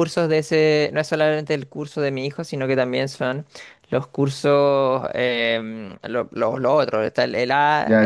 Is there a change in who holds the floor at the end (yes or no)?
yes